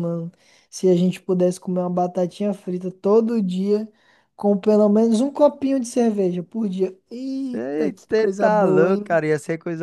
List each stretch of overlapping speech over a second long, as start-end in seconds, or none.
7.5-9.2